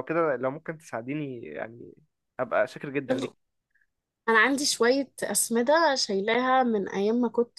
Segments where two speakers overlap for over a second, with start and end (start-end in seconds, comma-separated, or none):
none